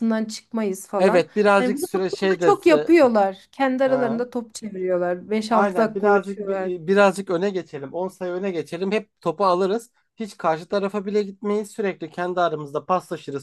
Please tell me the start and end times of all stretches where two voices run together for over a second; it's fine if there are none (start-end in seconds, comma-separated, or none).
1.0-2.5, 5.5-6.7